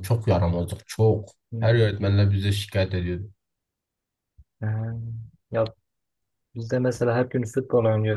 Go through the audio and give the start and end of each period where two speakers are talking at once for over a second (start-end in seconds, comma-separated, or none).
none